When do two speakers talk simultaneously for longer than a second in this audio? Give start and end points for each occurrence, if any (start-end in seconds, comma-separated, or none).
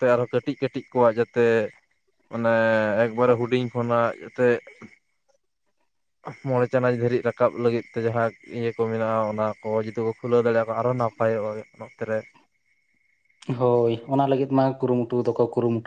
none